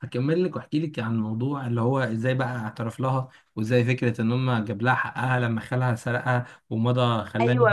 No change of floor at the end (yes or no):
no